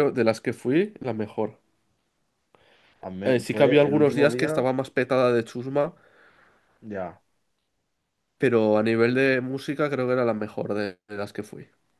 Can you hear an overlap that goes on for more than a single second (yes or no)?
yes